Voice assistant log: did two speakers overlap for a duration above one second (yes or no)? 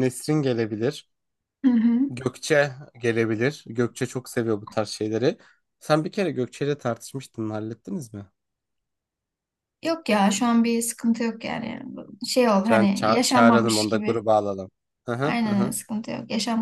yes